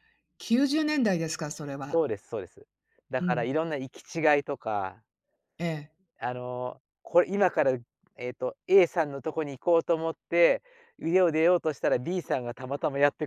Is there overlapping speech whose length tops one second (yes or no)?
no